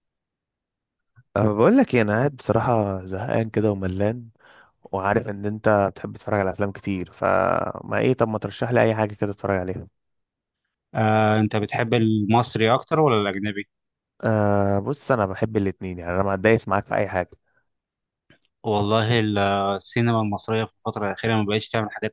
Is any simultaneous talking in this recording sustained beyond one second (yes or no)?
no